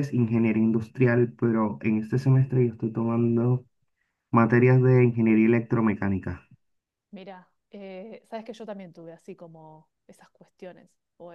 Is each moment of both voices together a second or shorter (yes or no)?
yes